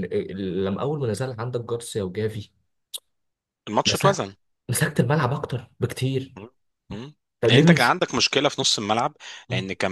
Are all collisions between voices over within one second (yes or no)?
yes